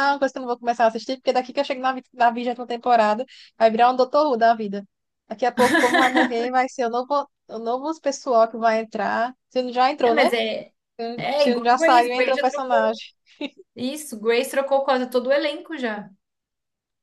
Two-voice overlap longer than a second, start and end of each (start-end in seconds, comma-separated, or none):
11.4-12.9